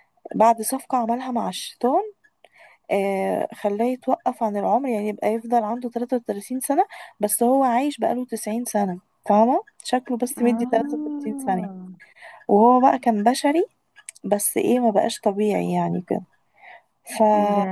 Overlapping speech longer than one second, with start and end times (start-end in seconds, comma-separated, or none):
10.4-11.7